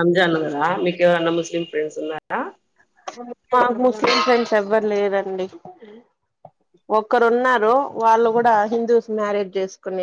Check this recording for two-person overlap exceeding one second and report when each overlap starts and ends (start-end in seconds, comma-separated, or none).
none